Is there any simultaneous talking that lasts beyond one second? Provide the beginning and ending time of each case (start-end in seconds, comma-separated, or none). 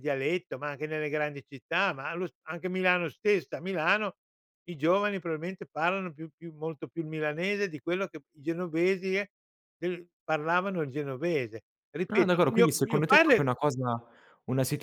12.1-13.5